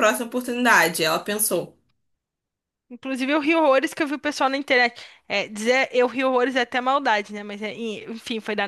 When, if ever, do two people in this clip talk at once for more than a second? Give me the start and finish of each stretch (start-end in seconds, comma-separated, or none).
none